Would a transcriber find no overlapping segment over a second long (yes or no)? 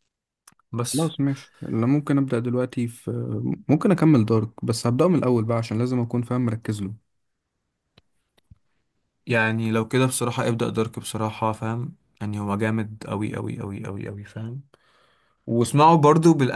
yes